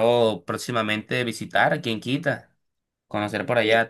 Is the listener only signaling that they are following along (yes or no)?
yes